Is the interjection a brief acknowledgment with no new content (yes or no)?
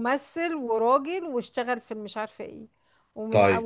yes